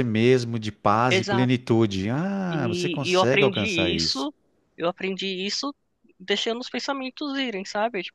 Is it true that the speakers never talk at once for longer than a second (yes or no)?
no